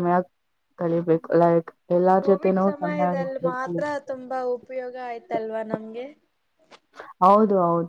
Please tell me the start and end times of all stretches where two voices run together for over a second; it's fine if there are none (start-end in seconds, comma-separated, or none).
2.2-3.8